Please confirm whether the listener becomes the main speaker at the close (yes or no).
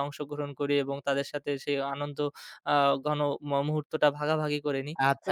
yes